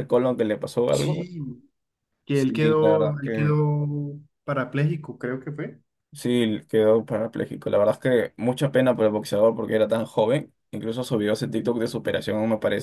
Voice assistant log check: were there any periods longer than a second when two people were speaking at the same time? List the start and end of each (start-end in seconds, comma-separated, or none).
2.3-3.6